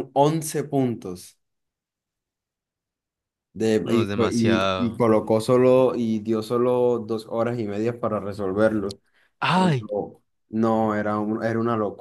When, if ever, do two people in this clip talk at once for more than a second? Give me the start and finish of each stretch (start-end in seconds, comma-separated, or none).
3.8-5.0